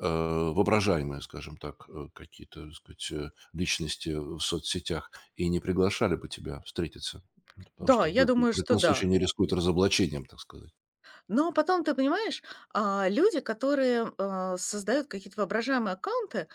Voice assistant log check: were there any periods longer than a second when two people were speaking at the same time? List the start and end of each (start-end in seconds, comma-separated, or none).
7.8-9.1